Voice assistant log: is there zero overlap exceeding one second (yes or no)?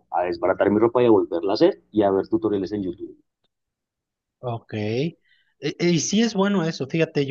yes